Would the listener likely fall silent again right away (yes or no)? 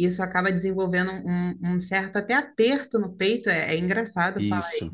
no